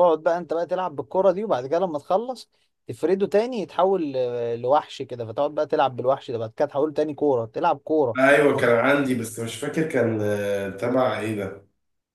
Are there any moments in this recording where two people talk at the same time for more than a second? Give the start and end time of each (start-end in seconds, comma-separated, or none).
none